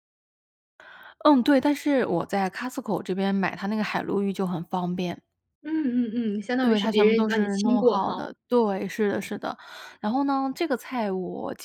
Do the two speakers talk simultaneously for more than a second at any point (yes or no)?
yes